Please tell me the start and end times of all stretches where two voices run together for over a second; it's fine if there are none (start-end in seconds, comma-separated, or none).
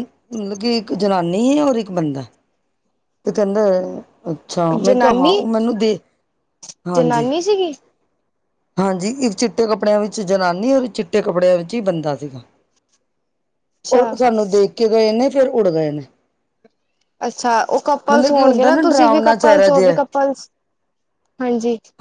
18.1-20.0